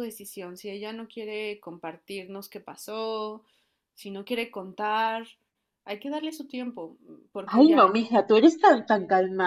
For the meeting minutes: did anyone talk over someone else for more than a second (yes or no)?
no